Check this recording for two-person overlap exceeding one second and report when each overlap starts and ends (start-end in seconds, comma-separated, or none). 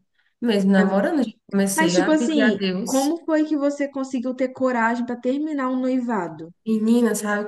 1.7-3.2